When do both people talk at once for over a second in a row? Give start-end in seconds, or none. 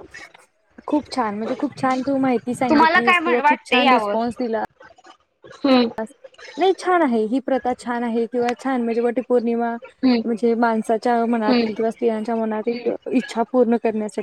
2.7-4.2